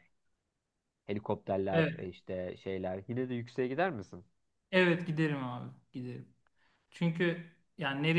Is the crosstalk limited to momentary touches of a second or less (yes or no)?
yes